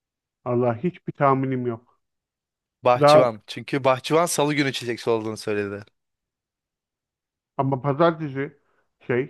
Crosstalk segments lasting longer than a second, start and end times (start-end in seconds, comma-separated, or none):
none